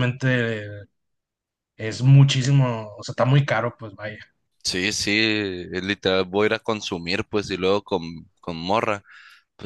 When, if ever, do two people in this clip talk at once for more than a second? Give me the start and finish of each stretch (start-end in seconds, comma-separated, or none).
none